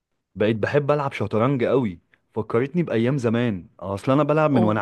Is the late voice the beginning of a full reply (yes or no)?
no